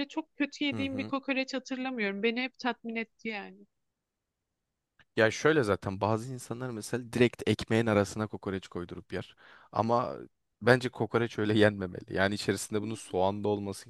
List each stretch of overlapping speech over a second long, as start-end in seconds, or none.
none